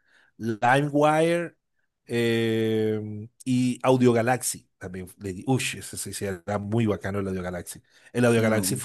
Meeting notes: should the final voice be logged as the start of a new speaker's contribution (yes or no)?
no